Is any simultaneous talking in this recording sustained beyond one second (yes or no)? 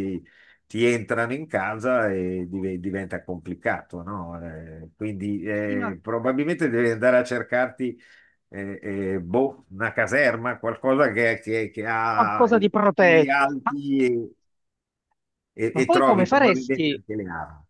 yes